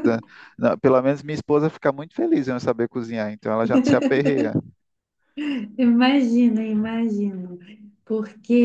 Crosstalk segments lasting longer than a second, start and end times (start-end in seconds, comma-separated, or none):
none